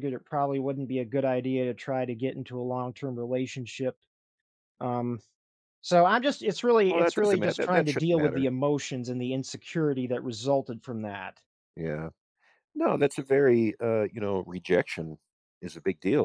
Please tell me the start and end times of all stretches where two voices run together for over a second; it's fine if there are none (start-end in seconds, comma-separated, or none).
6.9-8.5